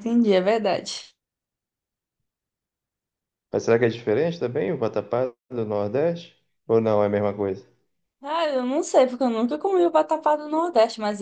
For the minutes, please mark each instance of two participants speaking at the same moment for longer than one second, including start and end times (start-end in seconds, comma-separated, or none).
none